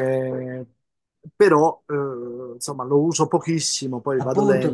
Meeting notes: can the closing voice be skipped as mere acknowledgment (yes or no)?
no